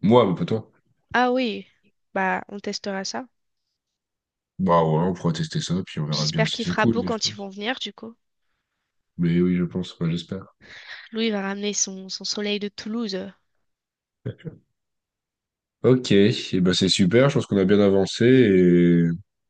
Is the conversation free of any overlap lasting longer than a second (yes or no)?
no